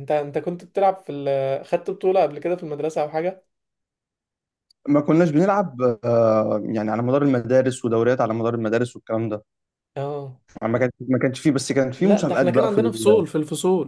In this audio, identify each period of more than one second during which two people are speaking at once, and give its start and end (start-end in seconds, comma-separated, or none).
12.0-13.2